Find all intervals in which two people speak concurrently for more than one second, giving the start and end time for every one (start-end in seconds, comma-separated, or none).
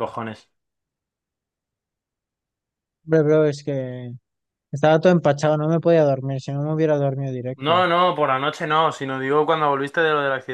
none